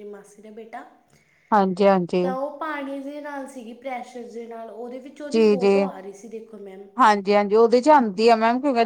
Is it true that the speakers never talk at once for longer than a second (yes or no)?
yes